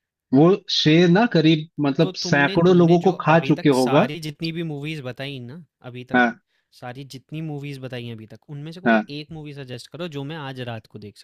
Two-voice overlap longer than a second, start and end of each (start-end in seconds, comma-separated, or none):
2.0-4.1